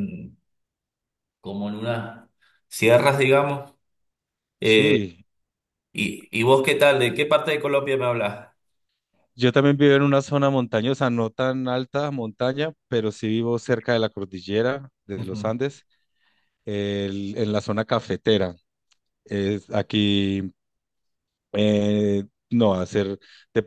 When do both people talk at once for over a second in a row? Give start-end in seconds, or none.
none